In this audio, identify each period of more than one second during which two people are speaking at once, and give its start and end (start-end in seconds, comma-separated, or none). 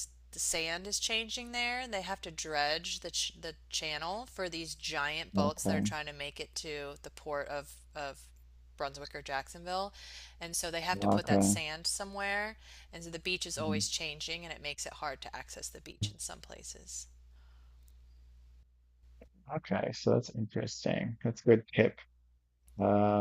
none